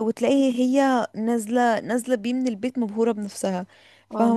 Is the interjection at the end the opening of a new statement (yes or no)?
no